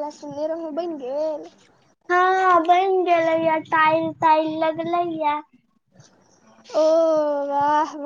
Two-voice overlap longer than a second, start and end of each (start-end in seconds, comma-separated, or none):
none